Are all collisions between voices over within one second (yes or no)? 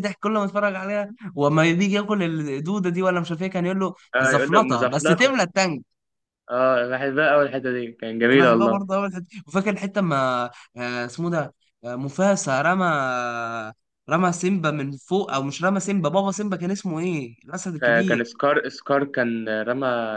no